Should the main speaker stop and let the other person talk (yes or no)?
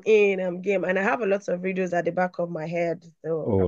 yes